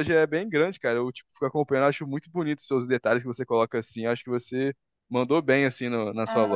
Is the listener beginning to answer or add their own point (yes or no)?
yes